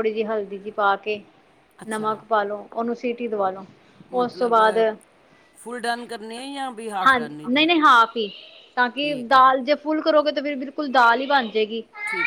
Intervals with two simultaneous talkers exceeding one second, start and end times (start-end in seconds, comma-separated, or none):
none